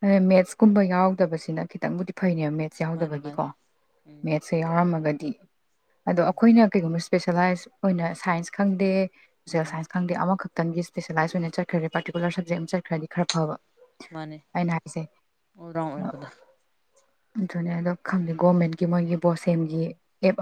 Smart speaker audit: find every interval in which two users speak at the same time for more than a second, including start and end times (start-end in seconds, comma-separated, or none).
none